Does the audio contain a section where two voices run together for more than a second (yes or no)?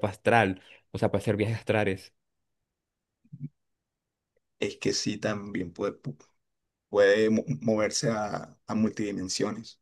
no